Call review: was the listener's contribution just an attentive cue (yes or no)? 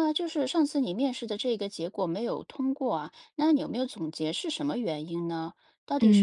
no